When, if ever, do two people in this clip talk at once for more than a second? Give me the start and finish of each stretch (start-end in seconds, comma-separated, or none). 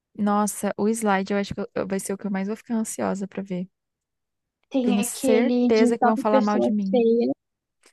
4.8-7.0